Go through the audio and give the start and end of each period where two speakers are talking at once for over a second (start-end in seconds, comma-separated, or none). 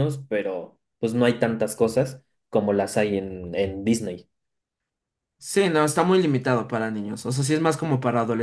none